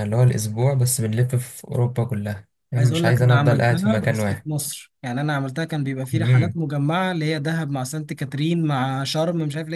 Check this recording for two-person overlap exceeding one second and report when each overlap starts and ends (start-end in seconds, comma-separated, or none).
2.8-4.5